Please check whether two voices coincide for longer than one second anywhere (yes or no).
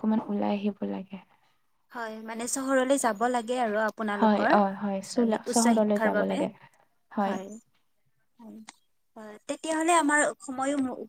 yes